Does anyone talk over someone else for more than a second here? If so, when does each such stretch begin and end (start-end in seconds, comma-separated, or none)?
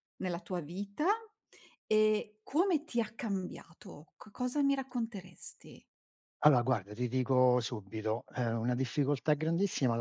none